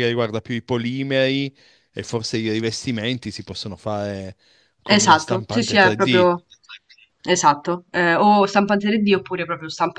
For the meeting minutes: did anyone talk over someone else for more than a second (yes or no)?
yes